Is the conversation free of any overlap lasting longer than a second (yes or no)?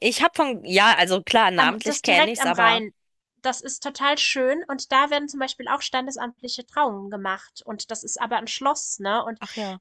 no